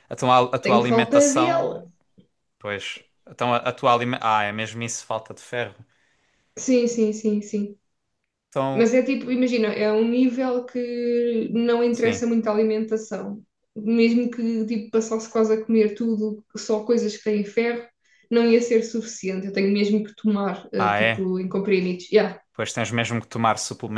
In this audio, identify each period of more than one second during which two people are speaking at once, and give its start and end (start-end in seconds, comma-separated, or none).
0.6-1.8